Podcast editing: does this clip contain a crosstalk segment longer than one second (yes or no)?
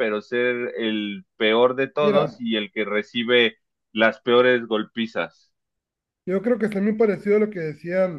no